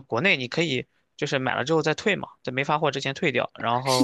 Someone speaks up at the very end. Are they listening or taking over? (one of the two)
taking over